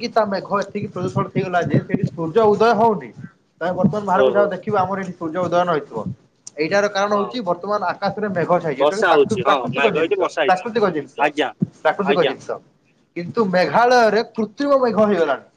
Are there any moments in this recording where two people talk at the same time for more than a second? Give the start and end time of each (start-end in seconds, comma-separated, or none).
8.8-10.6